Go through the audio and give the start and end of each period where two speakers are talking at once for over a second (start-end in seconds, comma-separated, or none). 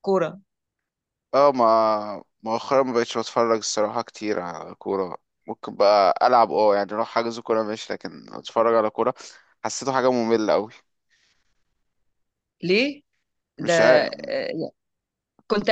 none